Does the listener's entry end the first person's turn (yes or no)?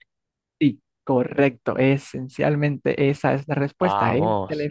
no